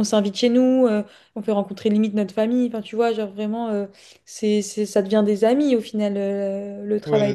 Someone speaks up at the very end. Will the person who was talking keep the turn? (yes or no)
no